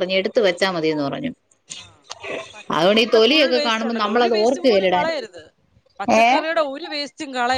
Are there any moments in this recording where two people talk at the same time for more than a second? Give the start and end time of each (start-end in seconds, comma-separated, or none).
2.8-5.1